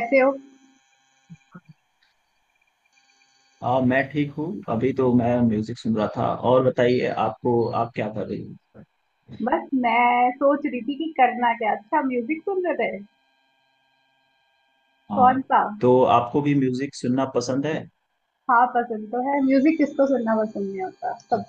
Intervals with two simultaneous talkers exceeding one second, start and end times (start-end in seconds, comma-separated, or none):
none